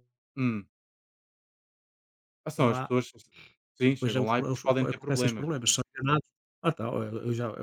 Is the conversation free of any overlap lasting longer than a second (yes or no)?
no